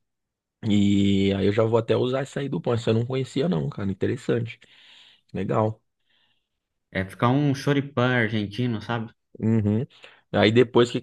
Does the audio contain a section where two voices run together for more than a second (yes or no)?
no